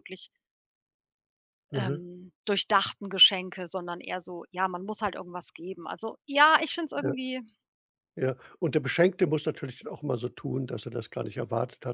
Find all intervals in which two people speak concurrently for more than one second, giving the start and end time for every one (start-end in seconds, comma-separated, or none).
none